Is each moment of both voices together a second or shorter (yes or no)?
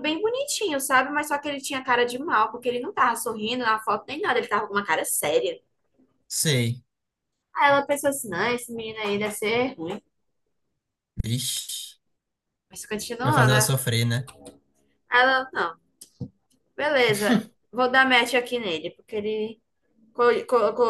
yes